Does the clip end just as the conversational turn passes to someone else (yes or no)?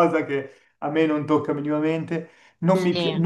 no